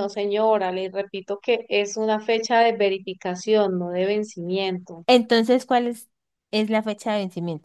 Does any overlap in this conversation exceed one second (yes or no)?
no